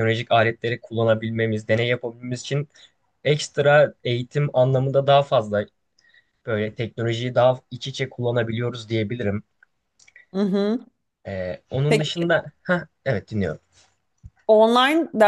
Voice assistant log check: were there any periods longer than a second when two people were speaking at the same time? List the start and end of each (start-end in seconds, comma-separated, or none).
none